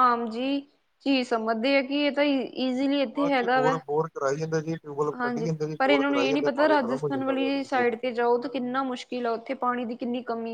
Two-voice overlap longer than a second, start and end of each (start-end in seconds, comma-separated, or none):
5.2-8.0